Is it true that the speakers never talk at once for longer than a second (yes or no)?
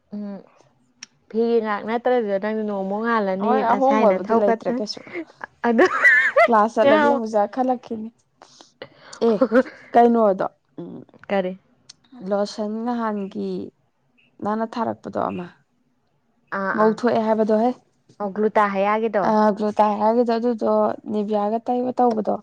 no